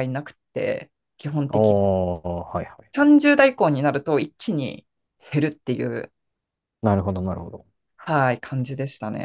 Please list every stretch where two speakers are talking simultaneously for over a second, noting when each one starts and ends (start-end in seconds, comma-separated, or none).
none